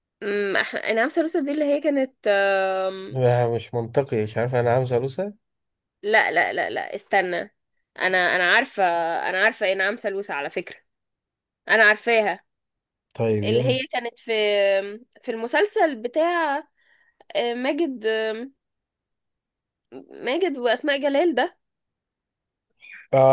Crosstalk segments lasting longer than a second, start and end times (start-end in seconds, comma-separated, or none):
none